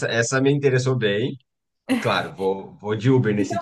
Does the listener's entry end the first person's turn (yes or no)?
yes